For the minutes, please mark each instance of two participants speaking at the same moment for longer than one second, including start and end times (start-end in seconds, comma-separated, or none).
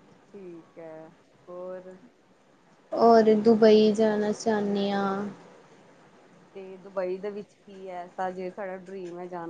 none